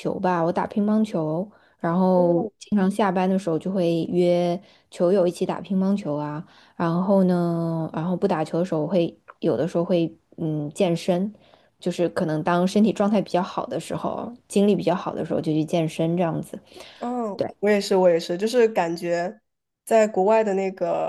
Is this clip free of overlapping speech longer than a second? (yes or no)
yes